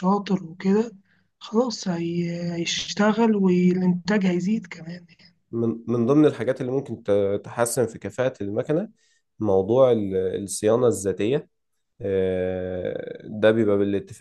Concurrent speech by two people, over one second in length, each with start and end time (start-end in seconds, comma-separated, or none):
none